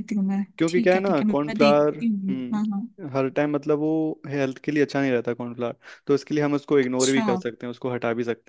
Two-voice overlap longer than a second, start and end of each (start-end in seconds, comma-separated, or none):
0.6-2.9